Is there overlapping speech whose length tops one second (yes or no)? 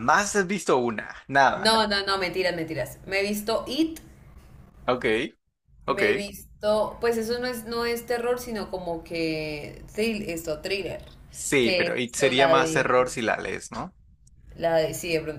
yes